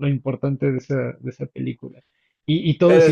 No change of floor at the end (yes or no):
yes